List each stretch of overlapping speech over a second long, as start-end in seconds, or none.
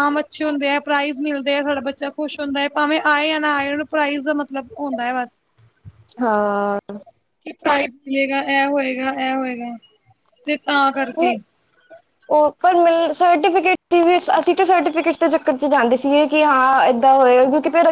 none